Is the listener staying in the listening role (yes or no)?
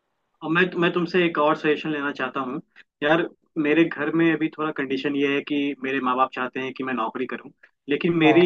yes